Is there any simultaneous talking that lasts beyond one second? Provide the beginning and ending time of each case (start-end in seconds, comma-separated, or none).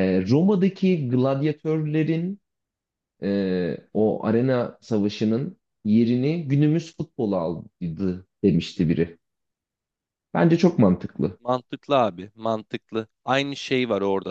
none